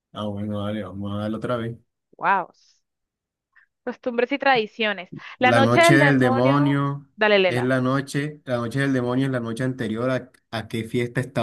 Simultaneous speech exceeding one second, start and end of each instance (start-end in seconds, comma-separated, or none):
5.4-6.8